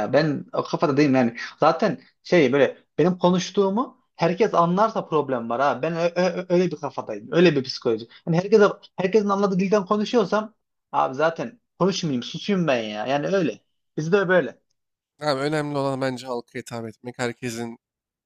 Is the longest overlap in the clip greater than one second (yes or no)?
no